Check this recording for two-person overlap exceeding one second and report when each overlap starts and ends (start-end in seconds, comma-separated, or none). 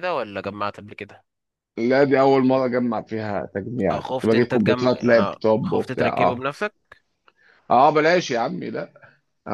3.9-6.4